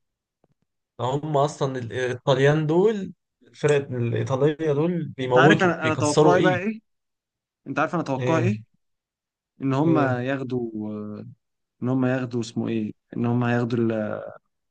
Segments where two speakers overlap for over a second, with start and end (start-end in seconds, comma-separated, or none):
5.2-6.6